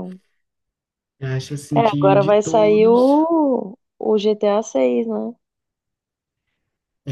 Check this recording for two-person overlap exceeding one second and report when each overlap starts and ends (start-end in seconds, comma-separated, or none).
1.8-3.2